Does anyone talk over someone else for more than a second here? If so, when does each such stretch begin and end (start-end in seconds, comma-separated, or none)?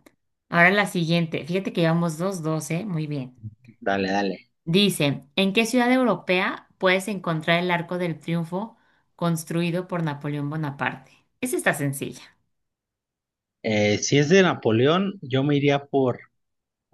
none